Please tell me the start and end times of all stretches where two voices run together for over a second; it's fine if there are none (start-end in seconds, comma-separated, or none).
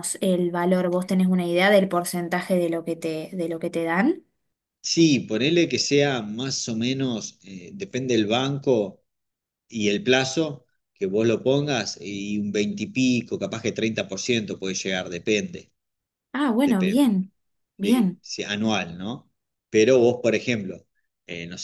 none